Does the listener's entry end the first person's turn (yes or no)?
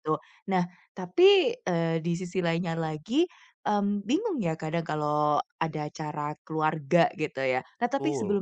no